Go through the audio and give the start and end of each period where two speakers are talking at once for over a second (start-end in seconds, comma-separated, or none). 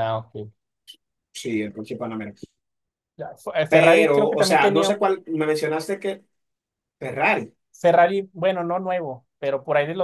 3.7-5.0